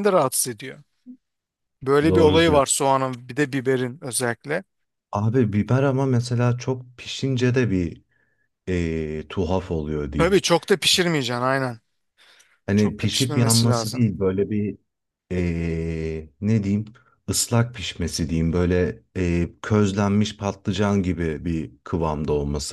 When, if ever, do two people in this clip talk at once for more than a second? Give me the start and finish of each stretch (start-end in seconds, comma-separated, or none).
12.8-14.1